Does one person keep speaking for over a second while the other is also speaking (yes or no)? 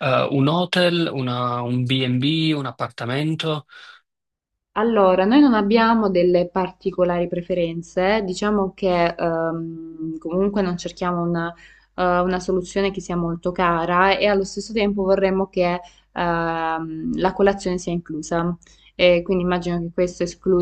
no